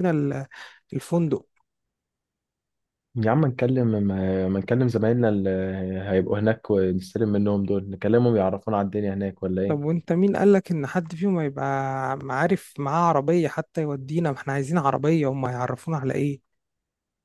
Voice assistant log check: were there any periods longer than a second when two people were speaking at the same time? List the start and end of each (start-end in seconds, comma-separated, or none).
none